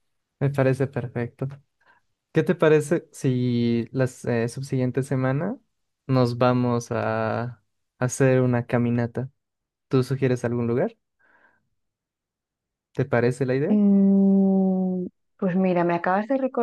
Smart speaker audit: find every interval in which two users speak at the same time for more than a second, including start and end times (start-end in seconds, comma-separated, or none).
none